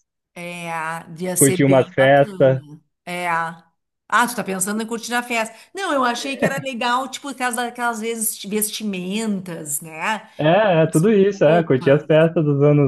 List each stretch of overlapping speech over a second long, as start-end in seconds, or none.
1.4-2.6, 10.8-12.3